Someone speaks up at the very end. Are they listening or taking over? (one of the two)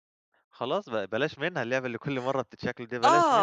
taking over